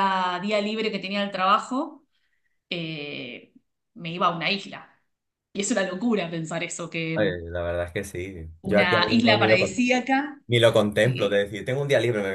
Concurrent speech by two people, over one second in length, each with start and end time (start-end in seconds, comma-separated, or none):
8.6-9.9